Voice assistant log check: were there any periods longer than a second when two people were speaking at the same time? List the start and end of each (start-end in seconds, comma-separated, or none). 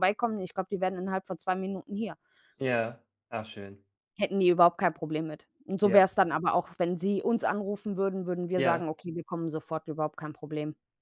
none